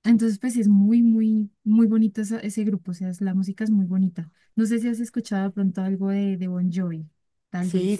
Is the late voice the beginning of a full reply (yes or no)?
yes